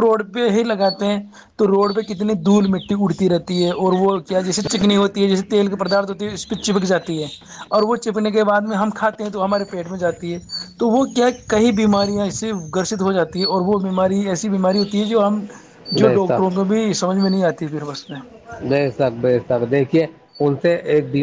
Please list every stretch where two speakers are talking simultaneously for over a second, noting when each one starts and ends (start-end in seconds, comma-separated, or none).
none